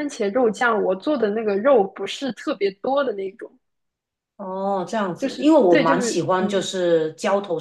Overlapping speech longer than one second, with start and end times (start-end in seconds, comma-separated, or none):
5.2-6.7